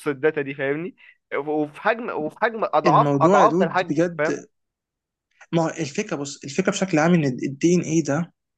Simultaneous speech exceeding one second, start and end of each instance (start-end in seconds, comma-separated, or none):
2.9-4.4